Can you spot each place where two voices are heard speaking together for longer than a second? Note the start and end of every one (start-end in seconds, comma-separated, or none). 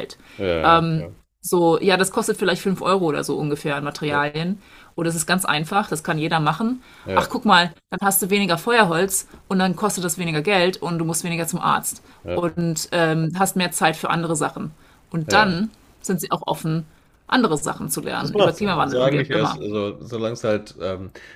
18.2-19.6